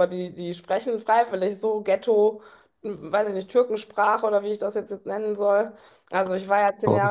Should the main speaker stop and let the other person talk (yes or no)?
no